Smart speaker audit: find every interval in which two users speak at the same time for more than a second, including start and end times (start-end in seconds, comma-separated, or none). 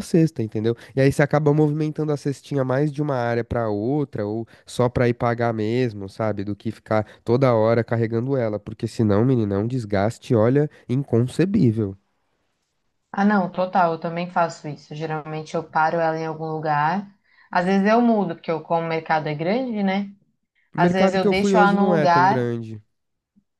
20.8-22.5